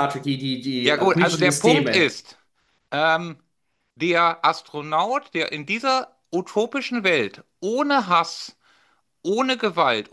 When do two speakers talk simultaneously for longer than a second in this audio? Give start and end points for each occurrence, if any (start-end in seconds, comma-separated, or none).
0.8-2.1